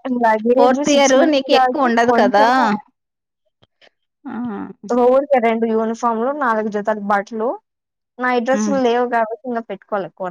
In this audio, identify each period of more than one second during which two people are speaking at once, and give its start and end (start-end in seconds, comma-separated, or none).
0.6-2.4